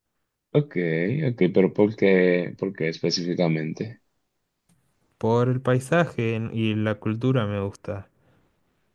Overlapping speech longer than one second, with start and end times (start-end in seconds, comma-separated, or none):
none